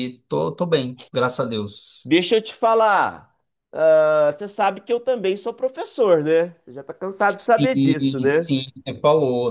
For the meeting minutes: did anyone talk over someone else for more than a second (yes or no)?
yes